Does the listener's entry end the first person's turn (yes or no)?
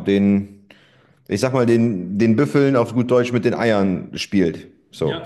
yes